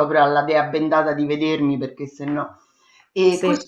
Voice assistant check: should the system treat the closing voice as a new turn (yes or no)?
no